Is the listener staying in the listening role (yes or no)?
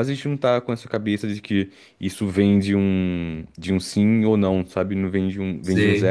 yes